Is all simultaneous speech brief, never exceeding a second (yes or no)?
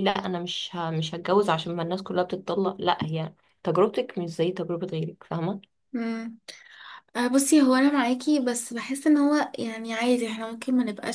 yes